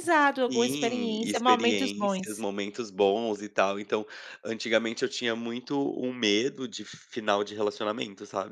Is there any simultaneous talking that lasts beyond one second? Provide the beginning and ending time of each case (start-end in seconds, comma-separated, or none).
0.5-2.3